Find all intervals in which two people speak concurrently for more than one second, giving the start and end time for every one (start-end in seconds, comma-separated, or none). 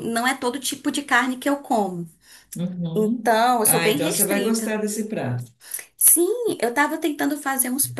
2.9-4.7